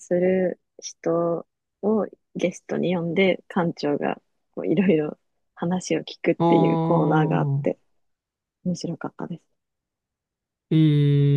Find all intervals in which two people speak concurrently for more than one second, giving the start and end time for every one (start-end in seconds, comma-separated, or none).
6.4-7.7